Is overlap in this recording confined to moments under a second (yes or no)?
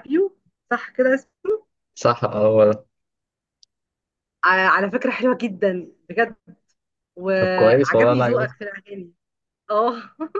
no